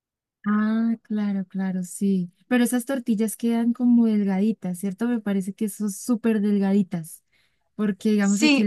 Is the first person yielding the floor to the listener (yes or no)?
no